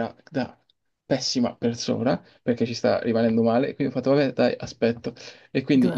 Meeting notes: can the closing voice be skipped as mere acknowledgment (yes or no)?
yes